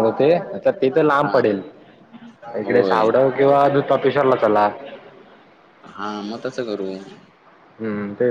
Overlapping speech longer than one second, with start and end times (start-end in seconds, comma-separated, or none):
none